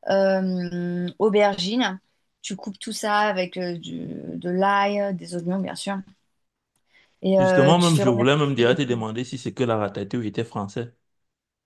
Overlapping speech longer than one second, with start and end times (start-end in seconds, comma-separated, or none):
7.4-9.0